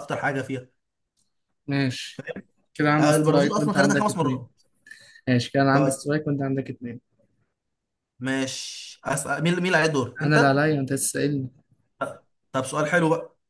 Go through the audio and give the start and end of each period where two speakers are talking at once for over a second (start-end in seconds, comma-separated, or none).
3.0-4.5